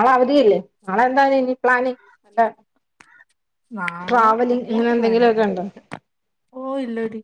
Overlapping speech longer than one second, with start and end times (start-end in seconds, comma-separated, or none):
4.1-5.7